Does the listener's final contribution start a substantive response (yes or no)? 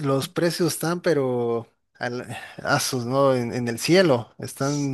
yes